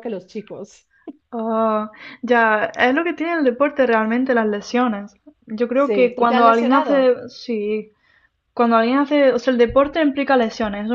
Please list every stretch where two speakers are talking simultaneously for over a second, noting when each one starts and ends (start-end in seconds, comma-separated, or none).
5.8-7.1